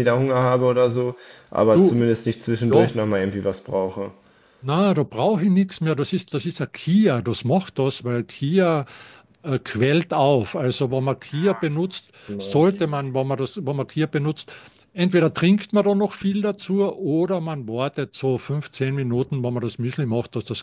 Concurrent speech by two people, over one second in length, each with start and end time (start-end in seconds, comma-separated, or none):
none